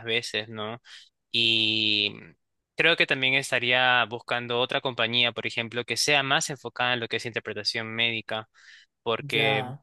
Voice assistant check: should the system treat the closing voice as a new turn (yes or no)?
no